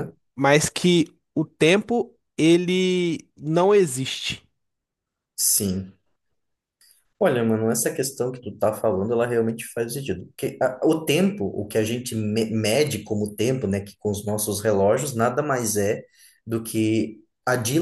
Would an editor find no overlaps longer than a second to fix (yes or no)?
yes